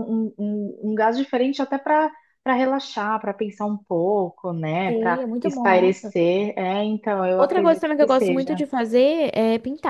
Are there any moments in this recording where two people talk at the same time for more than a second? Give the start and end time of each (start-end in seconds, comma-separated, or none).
4.8-6.2, 7.4-8.6